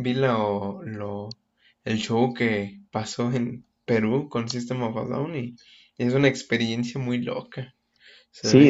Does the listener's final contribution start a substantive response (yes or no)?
yes